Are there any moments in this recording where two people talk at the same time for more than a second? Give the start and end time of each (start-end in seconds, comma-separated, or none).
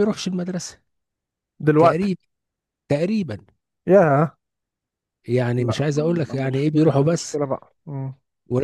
5.6-7.4